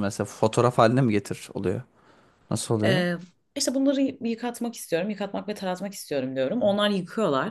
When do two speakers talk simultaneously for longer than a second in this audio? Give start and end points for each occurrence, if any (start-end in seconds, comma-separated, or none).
none